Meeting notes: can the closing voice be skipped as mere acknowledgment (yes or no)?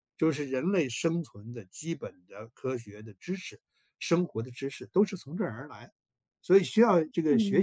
yes